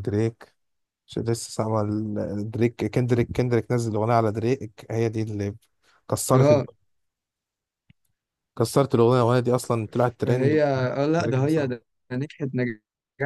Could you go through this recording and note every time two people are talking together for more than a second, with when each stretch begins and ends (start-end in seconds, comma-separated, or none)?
10.2-11.7